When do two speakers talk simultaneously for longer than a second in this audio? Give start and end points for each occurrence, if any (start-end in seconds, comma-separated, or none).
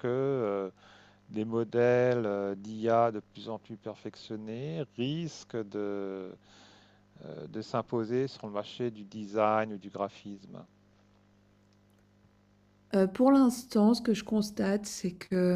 none